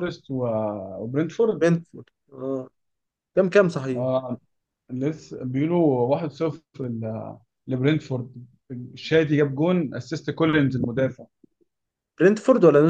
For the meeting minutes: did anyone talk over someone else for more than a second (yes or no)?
no